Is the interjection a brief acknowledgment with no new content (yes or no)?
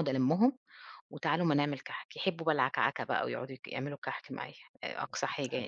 no